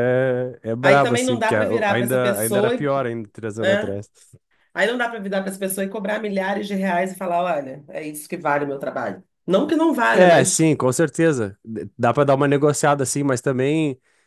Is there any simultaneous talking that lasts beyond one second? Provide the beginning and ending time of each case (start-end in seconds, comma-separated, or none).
0.8-2.9